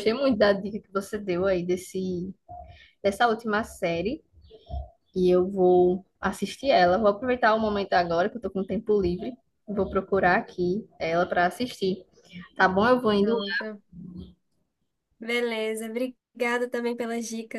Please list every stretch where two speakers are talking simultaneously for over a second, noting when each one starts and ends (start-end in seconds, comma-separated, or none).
none